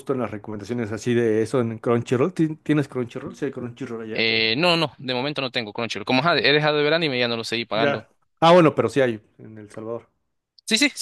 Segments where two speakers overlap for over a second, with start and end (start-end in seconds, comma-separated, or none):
none